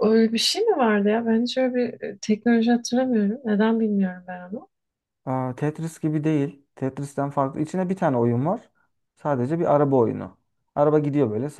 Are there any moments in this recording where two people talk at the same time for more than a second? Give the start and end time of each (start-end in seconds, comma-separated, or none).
none